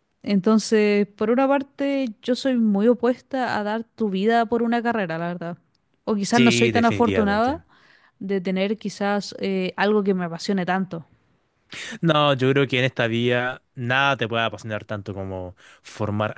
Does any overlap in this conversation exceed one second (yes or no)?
yes